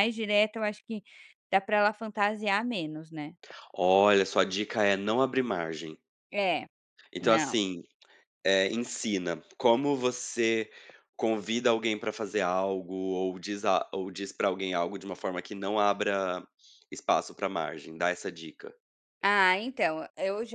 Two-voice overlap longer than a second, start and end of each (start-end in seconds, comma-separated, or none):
none